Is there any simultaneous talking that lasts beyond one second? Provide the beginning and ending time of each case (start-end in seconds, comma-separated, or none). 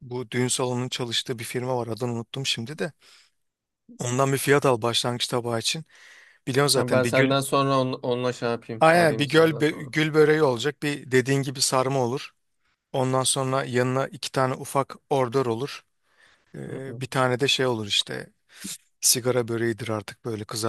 8.8-10.1